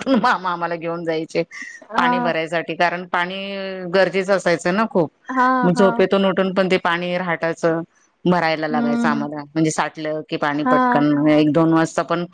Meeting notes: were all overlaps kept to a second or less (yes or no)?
yes